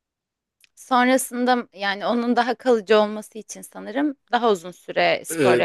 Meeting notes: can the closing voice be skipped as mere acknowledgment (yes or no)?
no